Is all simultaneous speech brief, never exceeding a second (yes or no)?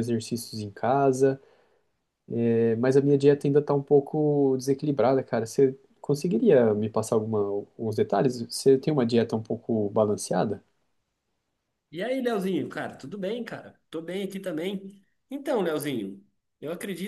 yes